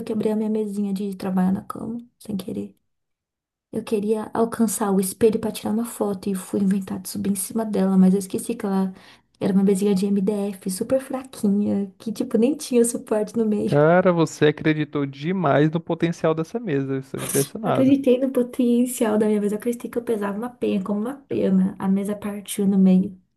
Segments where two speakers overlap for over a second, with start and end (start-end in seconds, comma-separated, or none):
none